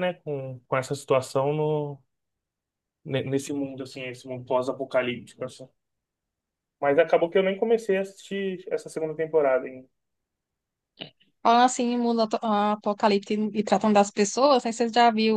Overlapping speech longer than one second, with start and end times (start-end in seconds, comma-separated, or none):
none